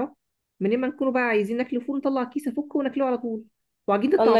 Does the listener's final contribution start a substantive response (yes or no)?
yes